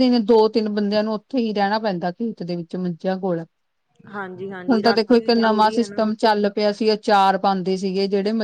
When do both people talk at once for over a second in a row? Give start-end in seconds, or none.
4.7-6.0